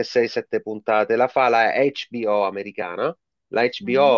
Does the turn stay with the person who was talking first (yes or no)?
yes